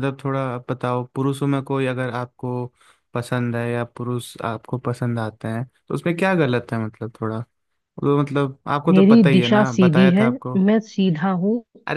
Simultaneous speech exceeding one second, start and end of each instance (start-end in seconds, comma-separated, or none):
8.9-10.3